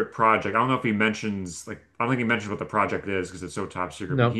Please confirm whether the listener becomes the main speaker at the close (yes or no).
no